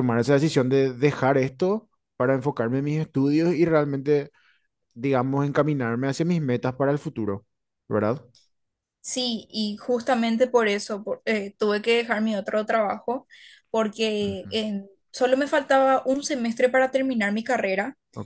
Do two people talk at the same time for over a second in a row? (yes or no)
no